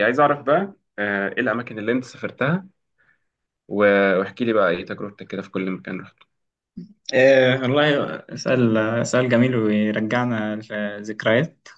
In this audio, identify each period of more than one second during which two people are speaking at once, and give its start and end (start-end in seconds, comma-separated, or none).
none